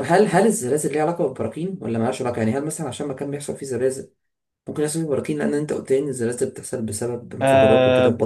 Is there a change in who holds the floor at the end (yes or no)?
yes